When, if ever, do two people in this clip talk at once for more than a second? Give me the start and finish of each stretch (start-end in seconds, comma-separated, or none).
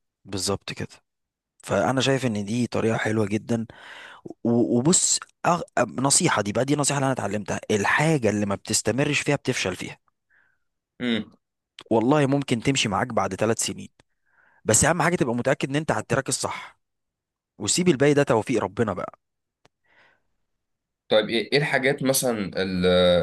none